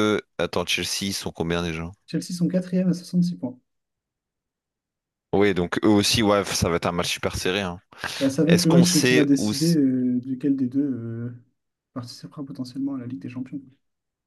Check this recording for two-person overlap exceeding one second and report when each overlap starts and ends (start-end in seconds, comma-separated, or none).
8.4-9.8